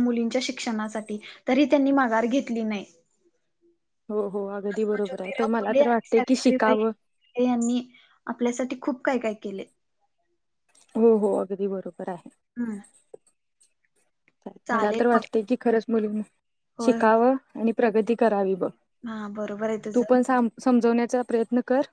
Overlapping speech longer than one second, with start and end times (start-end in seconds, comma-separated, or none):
4.7-6.9